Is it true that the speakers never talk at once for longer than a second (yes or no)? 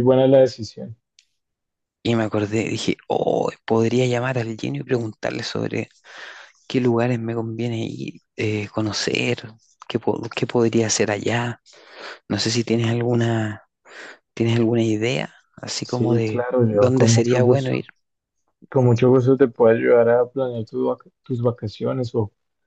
no